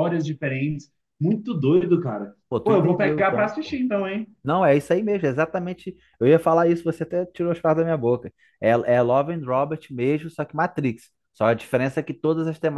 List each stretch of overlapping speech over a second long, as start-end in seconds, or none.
2.5-3.8